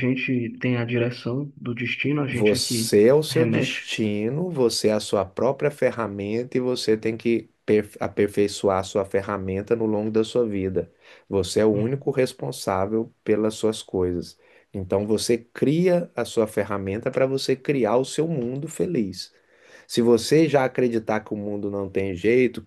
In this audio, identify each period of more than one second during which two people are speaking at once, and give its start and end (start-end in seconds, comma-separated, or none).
2.2-3.8